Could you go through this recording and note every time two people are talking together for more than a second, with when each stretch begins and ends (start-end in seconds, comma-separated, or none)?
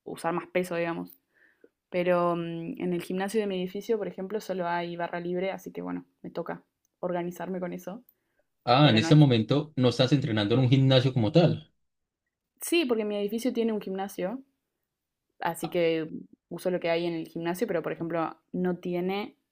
none